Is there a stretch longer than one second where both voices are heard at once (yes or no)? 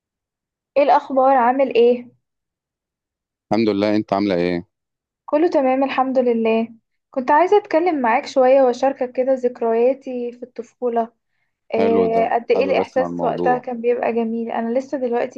yes